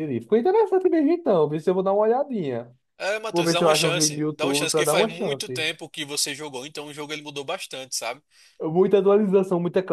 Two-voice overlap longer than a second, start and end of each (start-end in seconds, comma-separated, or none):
3.3-5.7